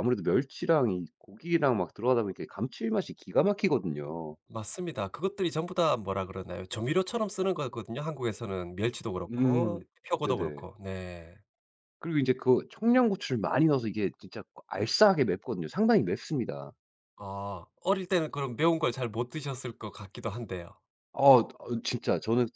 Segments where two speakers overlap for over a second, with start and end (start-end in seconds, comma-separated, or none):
9.3-10.7